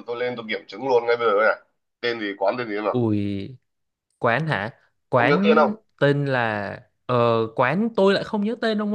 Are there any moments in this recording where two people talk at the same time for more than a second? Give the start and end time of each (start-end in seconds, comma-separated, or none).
none